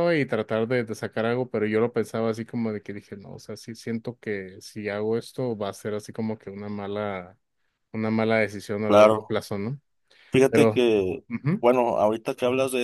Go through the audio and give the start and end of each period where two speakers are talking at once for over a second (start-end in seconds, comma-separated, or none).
none